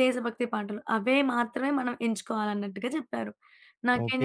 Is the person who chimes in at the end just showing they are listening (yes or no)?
no